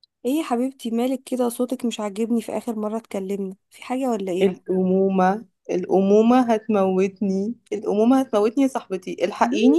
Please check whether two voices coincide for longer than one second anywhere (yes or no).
no